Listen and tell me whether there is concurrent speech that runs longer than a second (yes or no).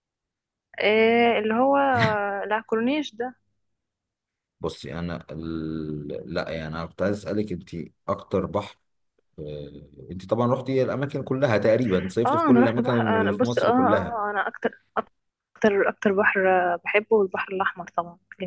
yes